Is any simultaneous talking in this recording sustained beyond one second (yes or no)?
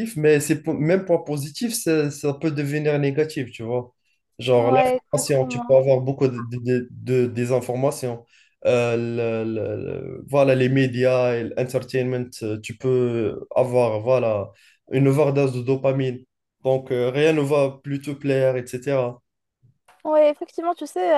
yes